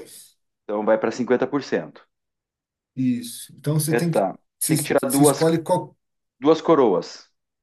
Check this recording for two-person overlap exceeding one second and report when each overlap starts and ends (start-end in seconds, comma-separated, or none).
3.9-5.6